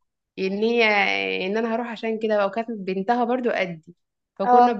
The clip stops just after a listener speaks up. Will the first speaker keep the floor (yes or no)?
yes